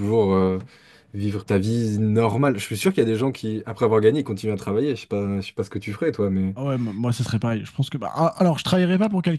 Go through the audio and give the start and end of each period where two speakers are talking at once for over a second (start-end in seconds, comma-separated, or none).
none